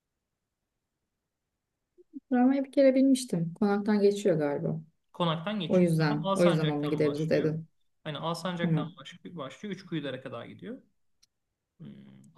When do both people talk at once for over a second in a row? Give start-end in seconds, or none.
5.7-7.5